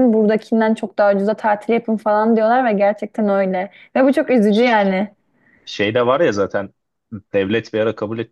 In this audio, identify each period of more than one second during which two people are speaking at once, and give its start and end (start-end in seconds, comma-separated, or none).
none